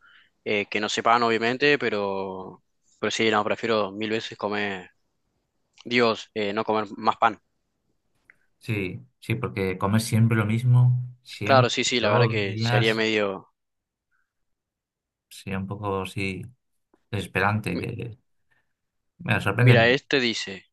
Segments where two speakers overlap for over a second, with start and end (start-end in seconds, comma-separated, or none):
11.4-13.0